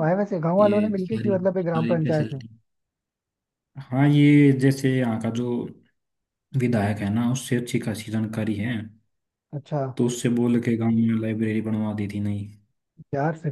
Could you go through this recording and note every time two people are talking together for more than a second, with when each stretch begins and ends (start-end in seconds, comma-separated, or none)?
0.6-2.4